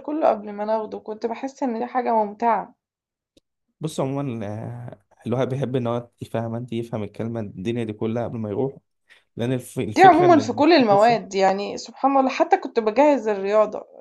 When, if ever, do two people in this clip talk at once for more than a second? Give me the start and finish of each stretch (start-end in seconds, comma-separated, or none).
10.0-11.2